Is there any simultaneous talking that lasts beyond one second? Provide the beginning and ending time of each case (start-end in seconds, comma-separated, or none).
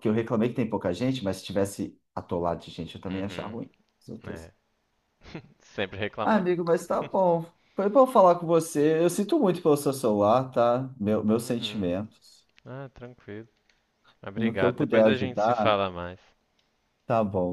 14.3-15.8